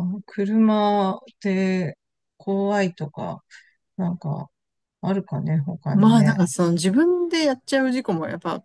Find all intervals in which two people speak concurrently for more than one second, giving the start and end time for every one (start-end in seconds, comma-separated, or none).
none